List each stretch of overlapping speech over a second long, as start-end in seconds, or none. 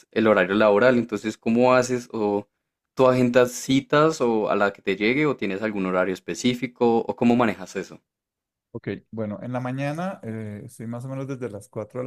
none